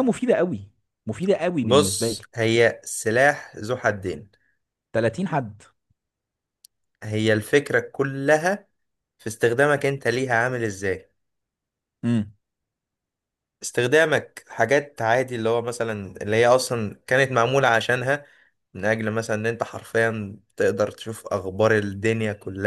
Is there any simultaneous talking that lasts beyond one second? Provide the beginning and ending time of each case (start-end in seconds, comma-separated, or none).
none